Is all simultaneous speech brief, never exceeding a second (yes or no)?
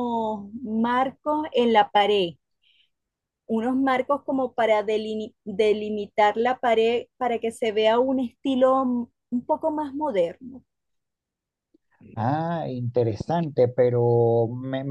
yes